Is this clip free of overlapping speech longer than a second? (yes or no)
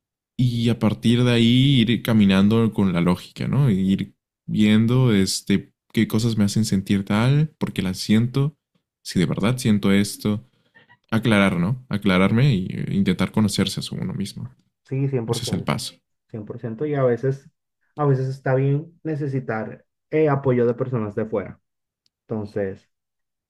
yes